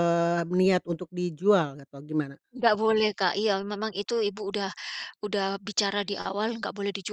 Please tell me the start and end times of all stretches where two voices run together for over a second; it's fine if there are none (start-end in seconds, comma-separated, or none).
none